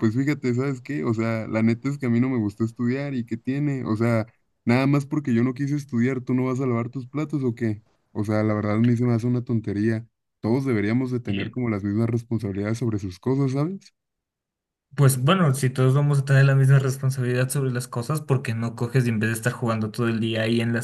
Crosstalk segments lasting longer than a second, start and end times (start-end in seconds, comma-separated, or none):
none